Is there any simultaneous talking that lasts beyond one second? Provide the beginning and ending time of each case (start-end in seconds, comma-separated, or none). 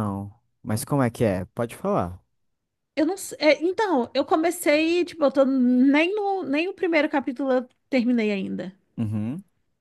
none